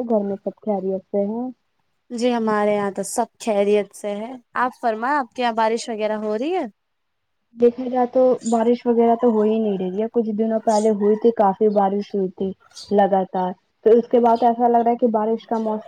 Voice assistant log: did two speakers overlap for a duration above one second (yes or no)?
no